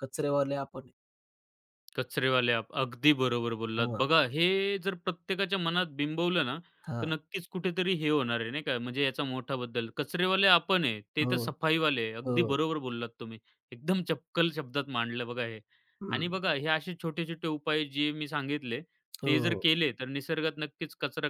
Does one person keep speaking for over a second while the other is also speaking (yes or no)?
no